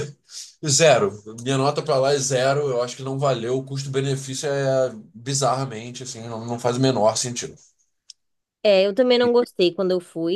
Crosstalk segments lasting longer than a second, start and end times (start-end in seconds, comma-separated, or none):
none